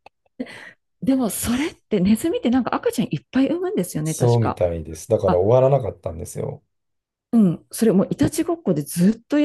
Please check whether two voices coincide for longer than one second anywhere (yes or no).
no